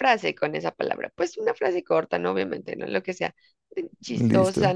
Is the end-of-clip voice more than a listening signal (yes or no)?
no